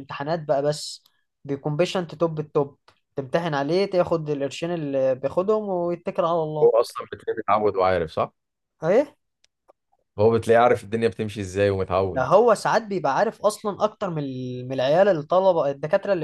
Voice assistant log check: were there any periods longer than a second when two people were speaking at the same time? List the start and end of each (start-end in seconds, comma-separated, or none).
none